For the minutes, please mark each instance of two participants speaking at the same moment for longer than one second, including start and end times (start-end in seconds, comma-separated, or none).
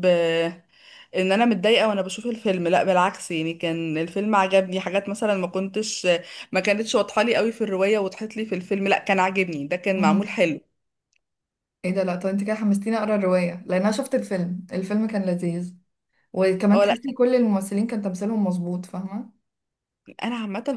none